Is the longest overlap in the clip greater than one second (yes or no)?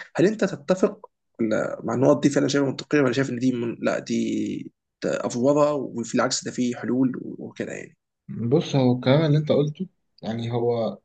no